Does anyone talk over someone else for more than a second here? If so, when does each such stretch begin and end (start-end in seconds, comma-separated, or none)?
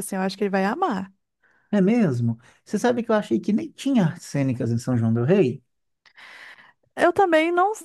none